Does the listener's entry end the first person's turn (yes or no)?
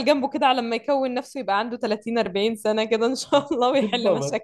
yes